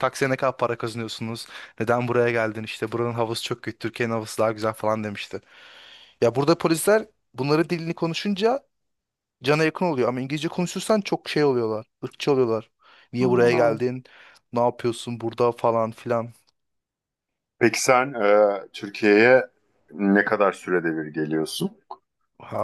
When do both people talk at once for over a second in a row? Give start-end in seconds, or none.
none